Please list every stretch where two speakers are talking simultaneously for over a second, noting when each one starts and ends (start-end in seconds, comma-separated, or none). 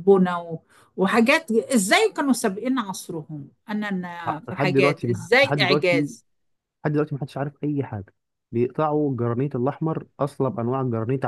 4.5-6.1